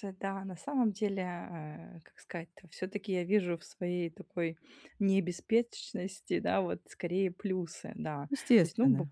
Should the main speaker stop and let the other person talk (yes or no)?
no